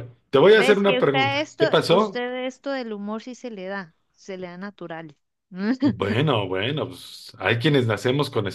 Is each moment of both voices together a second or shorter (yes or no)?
no